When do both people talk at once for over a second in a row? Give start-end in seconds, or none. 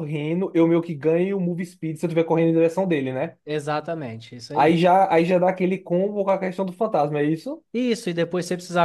none